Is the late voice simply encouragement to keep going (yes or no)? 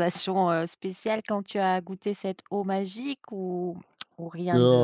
no